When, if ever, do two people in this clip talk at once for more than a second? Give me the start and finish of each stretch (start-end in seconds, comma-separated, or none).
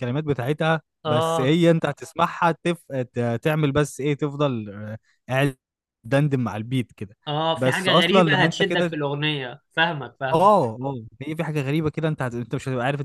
7.5-8.9